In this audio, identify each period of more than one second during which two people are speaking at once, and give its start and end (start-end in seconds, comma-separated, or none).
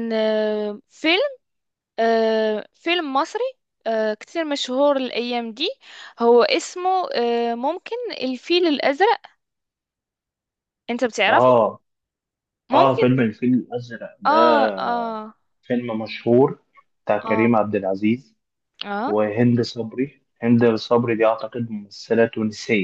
none